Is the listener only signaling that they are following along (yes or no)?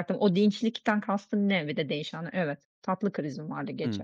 no